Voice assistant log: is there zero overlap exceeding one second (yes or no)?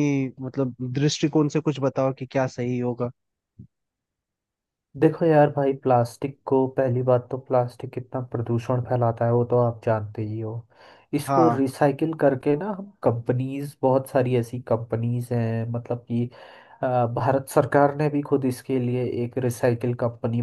yes